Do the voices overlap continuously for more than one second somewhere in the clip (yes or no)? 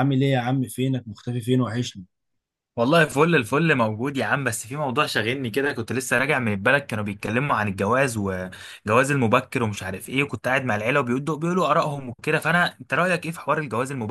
no